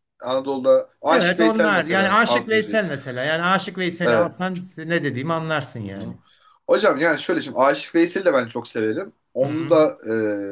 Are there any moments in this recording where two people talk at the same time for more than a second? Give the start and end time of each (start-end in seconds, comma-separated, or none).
1.1-2.8